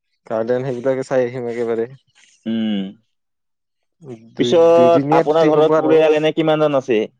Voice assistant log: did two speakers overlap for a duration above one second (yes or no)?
yes